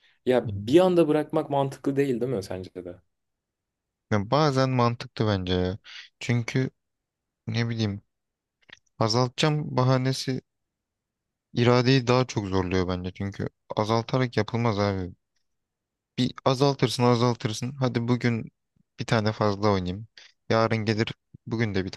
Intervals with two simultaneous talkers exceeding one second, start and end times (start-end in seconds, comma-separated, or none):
none